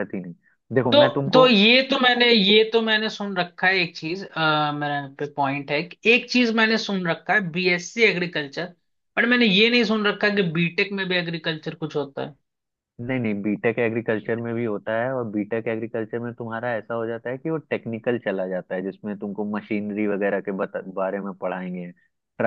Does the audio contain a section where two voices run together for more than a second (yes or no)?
no